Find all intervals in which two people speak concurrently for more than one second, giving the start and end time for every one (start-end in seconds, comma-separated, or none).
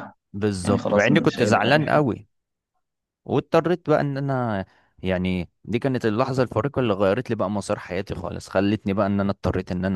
0.7-2.0